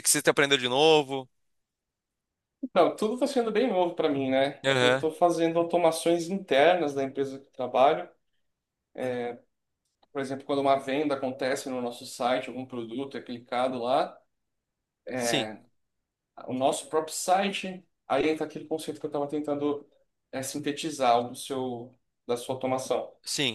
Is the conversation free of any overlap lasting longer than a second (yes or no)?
yes